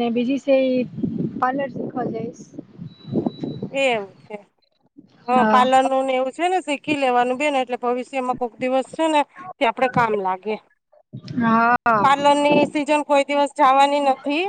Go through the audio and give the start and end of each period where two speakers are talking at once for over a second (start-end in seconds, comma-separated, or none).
none